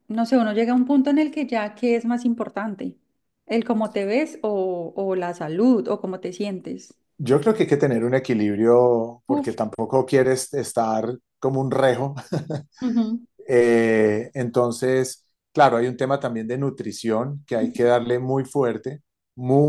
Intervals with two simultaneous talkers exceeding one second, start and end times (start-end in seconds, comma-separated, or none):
none